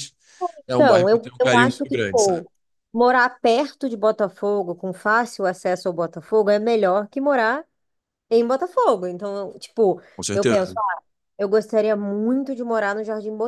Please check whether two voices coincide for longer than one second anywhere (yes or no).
yes